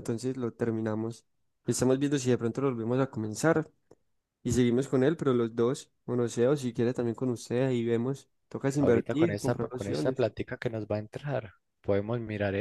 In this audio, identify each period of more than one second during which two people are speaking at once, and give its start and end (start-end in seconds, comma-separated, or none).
8.8-10.2